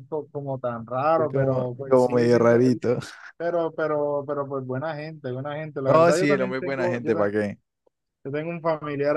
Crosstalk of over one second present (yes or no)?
yes